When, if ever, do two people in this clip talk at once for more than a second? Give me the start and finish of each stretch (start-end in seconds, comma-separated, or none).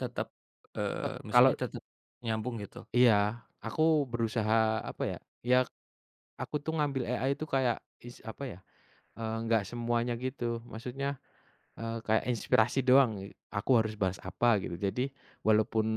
none